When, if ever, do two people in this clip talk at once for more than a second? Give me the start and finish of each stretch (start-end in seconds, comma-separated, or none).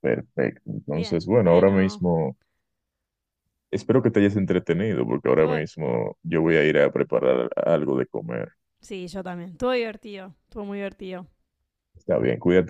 0.8-2.0